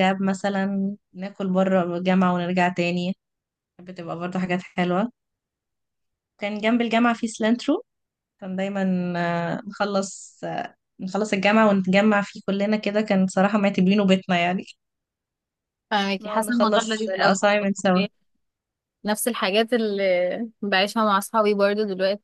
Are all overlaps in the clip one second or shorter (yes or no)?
no